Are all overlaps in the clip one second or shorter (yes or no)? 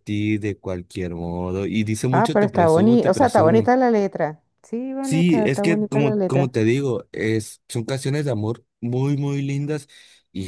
no